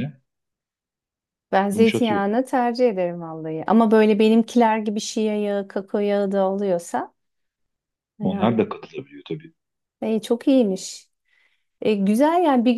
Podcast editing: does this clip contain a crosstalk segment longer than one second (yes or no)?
no